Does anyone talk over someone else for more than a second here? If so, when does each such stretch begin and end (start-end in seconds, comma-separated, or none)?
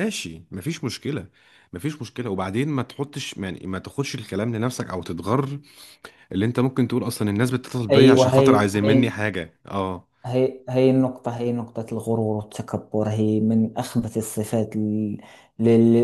7.9-9.1